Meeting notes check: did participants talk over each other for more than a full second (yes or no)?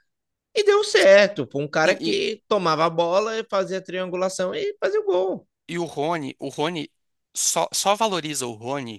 no